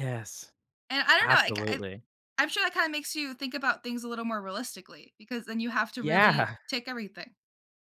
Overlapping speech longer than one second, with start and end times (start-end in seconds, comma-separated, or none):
none